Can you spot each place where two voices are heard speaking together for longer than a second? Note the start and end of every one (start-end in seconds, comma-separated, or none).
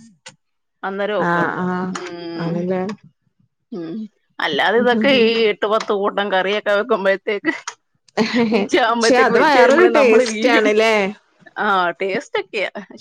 8.9-10.7